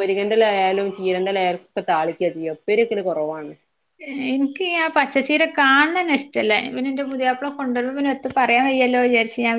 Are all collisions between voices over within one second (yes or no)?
yes